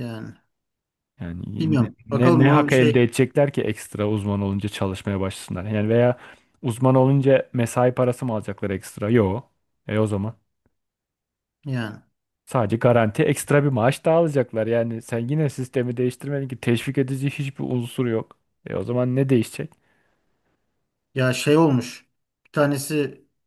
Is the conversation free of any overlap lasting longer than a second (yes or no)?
no